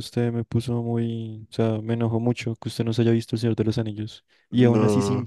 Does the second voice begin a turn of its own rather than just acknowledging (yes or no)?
no